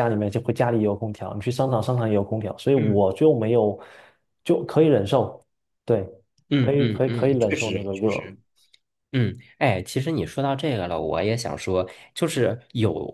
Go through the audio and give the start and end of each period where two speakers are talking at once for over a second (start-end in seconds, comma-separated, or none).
6.5-8.3